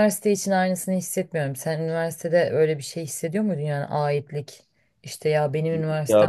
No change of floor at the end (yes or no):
yes